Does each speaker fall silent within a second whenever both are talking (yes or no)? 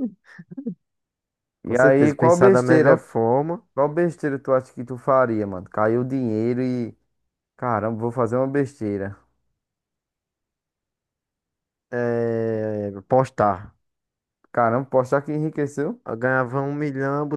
no